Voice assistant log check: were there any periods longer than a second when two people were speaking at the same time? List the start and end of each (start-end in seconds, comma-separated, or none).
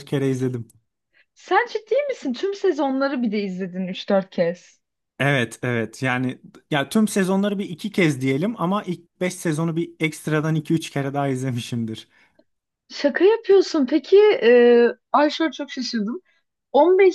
none